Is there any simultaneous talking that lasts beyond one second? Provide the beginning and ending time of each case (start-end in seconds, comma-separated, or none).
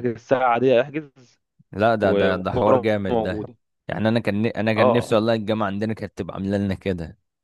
2.0-3.4